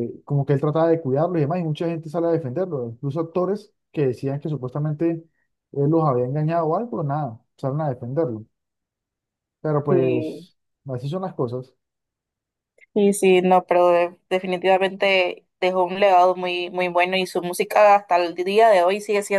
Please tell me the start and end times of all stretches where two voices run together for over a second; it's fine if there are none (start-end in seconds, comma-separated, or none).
none